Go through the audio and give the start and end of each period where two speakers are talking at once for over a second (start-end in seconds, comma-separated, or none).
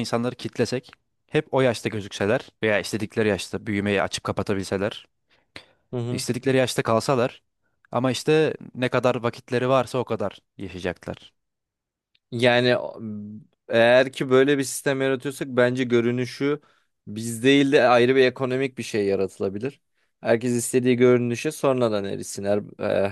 none